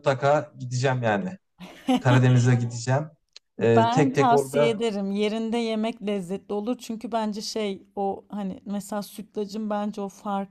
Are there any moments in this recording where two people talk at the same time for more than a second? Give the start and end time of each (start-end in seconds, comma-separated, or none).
3.6-4.8